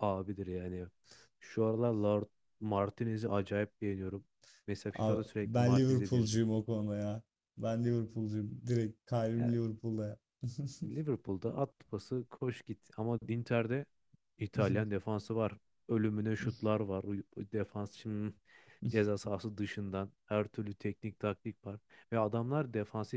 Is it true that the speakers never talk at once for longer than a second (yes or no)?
no